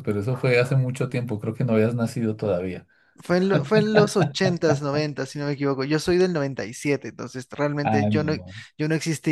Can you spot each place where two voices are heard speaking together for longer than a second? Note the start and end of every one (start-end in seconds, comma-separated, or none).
none